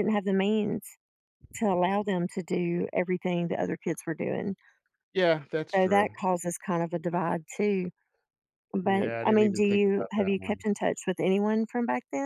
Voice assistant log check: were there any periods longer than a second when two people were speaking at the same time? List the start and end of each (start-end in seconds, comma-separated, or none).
8.8-10.6